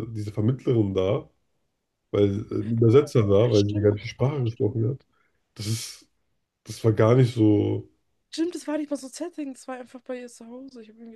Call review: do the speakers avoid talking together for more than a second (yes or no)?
no